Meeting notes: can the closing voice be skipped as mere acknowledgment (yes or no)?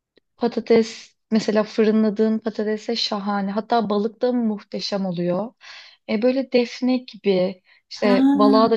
yes